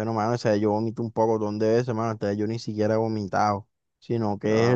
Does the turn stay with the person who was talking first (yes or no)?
yes